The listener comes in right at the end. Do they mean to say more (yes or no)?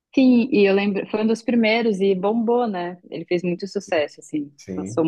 no